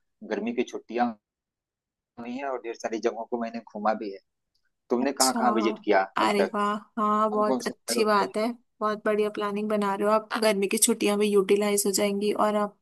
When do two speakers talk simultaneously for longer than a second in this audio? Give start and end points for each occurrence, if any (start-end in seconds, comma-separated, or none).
7.1-8.3